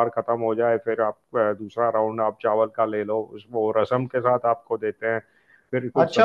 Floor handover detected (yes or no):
yes